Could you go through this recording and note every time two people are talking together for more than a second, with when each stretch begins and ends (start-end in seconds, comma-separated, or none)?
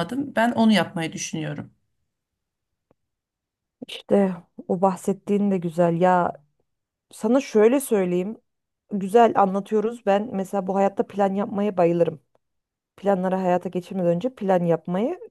none